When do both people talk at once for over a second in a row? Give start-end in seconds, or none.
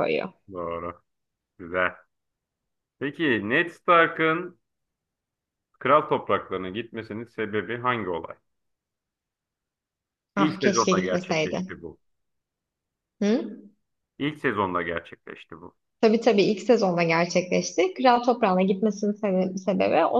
10.4-11.6